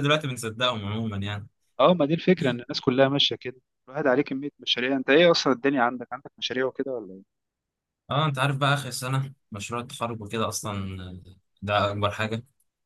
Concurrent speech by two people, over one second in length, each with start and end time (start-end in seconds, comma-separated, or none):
none